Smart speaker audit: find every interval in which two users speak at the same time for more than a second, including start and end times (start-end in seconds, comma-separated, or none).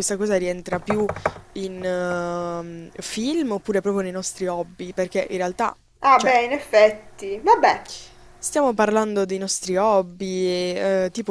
none